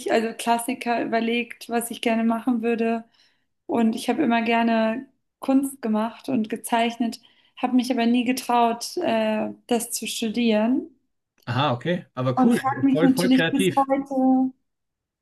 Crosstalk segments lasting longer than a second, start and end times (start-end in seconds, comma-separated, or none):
12.3-13.9